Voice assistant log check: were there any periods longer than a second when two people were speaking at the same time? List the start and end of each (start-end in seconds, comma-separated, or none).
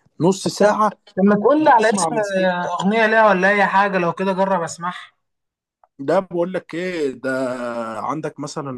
none